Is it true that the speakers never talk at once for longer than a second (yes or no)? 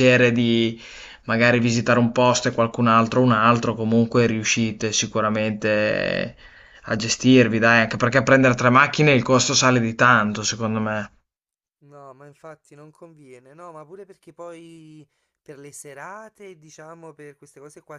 yes